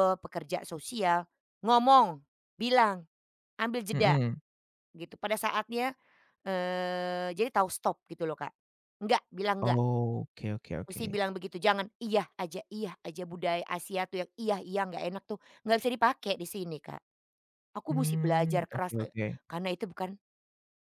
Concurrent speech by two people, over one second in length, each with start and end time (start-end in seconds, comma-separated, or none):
17.9-19.4